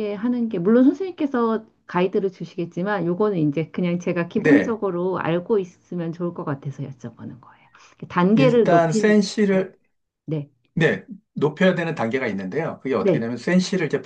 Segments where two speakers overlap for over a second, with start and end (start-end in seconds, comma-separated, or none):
8.3-9.6